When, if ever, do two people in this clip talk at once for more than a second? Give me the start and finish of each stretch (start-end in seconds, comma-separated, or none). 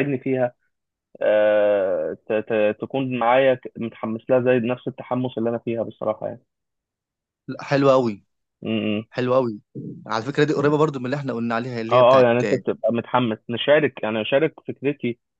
none